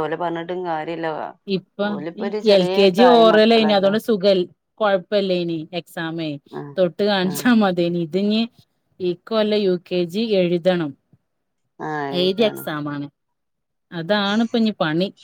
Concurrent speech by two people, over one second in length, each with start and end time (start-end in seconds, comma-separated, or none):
none